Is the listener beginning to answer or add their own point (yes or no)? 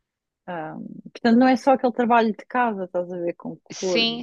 yes